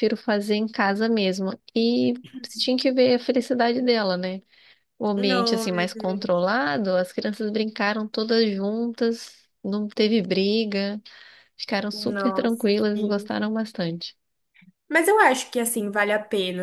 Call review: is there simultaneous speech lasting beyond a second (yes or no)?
yes